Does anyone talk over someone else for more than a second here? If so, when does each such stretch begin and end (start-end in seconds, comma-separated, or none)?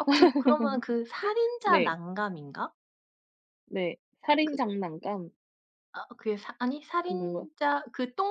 none